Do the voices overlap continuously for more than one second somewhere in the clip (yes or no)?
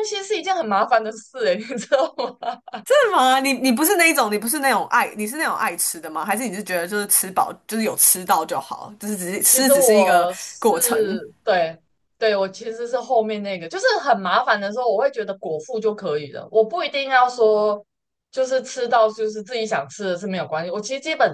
yes